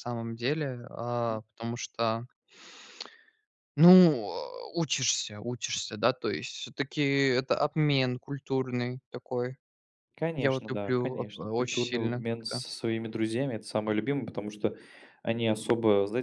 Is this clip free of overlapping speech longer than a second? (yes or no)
no